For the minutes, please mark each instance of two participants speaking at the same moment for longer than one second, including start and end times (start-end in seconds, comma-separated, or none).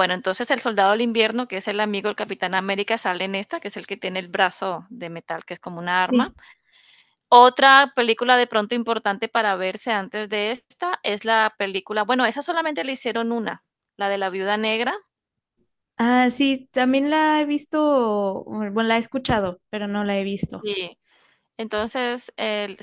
none